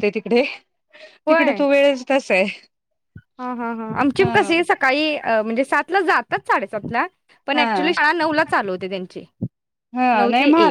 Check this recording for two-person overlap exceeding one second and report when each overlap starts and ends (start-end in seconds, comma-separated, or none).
none